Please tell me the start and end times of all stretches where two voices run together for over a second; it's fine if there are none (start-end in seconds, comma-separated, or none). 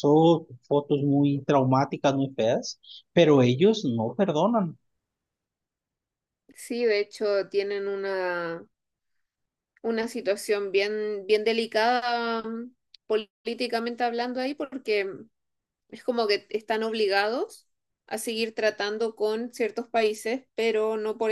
none